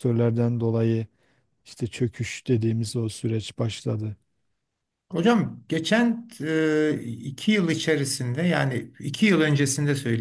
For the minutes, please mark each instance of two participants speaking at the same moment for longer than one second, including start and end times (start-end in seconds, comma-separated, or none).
none